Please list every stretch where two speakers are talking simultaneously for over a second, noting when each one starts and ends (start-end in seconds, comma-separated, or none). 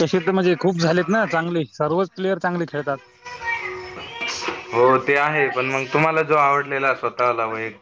none